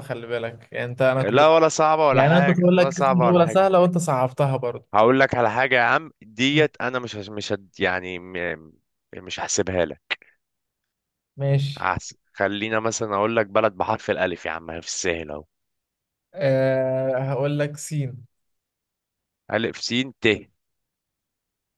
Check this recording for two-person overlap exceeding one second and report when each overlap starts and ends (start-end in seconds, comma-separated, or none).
2.1-3.7